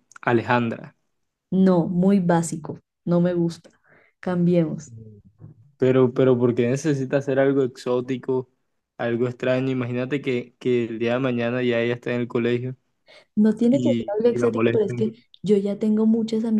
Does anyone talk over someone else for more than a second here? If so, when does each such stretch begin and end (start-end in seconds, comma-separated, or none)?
13.7-15.1